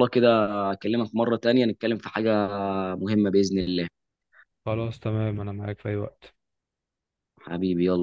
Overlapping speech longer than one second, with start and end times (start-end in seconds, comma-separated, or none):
none